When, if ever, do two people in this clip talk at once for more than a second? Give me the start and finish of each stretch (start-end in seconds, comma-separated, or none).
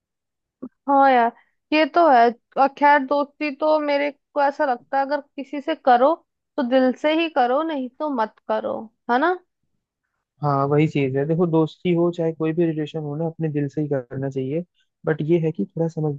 none